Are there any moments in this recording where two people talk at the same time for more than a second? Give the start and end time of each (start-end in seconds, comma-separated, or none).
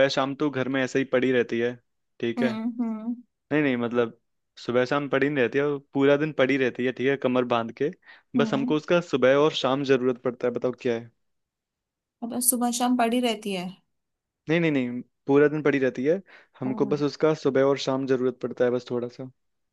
none